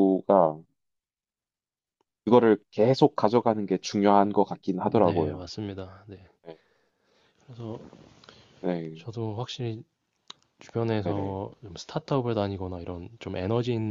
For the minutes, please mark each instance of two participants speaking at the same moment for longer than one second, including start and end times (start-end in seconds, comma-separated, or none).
none